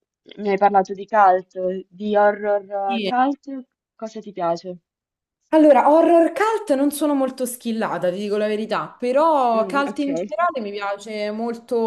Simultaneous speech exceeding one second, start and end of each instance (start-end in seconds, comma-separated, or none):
none